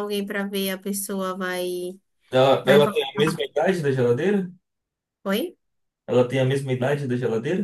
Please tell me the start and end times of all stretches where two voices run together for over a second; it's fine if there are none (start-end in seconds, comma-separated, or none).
none